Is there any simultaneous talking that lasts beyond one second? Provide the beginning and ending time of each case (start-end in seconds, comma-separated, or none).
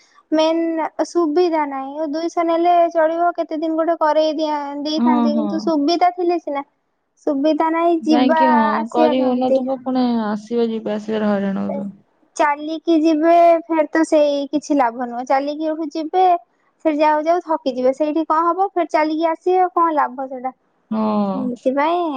none